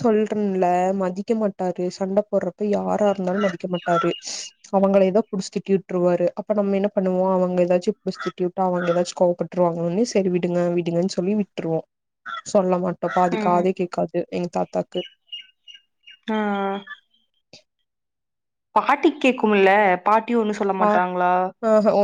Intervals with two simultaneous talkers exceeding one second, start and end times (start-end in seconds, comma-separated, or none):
none